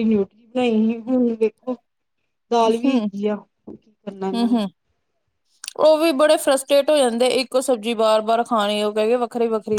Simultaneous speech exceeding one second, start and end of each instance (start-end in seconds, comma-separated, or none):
none